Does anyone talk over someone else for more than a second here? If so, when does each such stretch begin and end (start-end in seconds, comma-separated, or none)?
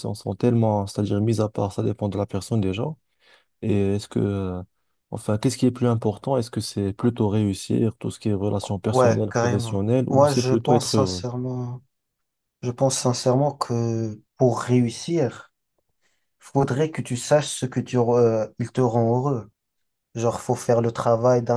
8.8-11.2